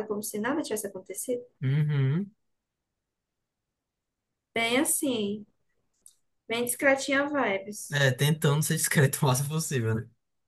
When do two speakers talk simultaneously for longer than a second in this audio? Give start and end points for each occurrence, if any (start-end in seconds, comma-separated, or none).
none